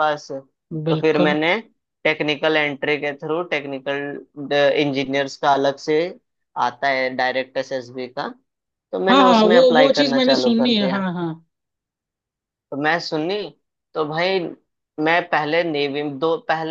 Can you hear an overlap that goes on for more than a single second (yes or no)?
yes